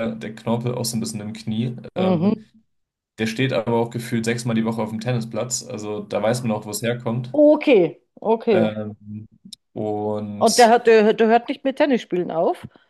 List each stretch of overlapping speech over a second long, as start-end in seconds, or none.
none